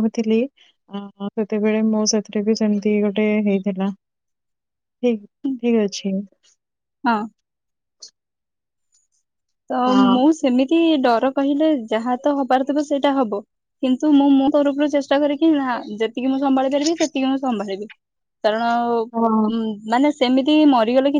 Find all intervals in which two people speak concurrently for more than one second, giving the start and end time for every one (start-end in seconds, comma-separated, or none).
none